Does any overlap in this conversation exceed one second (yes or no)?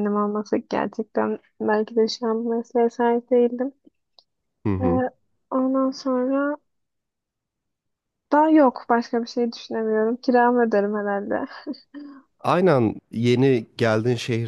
no